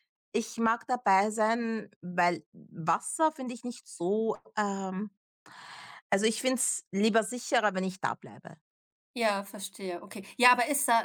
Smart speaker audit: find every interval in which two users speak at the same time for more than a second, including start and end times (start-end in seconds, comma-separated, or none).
none